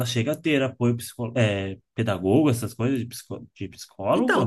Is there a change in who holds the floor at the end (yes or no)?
yes